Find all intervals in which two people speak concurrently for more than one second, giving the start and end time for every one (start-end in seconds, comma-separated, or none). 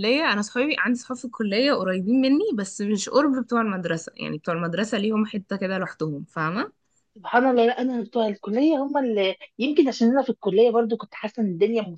none